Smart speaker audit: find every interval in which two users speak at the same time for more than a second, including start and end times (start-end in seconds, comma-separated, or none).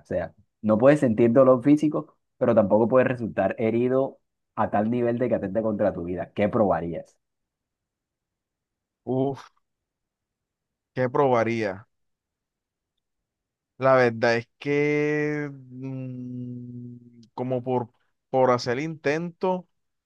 none